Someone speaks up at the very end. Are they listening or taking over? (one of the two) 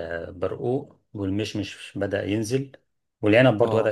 listening